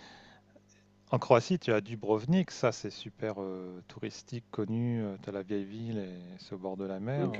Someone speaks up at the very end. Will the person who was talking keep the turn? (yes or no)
yes